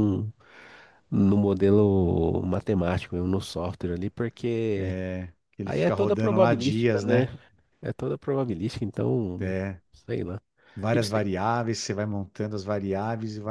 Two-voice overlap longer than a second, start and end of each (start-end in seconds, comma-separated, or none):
5.6-7.3